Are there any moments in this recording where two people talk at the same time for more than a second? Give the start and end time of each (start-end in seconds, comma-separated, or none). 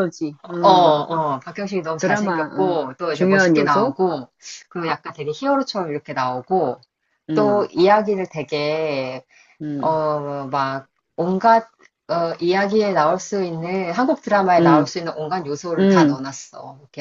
2.0-4.0